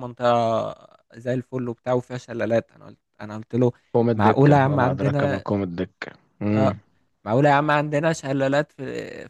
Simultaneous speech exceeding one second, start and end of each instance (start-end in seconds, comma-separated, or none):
4.2-5.4